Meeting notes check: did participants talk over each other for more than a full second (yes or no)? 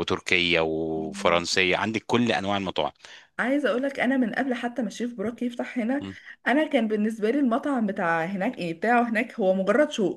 no